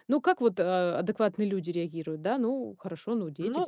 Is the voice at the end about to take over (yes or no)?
yes